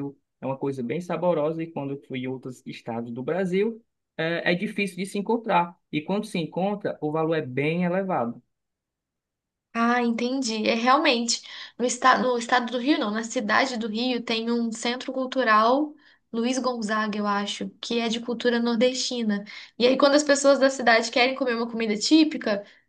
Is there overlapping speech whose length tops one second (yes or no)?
no